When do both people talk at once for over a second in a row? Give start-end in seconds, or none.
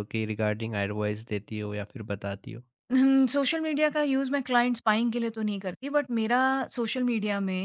none